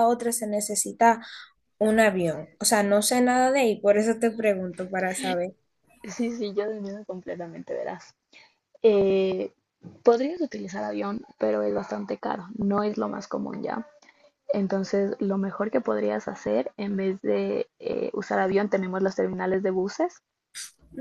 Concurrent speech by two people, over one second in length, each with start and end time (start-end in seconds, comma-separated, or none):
none